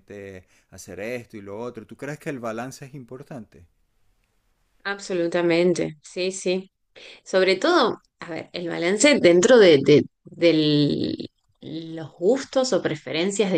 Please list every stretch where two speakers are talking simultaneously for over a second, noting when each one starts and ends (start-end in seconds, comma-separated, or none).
none